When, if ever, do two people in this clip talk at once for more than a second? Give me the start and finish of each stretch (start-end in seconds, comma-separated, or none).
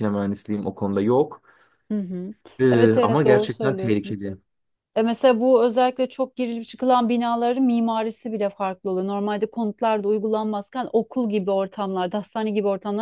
2.7-4.2